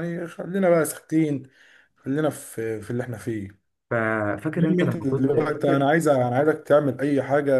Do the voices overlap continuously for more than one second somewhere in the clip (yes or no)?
yes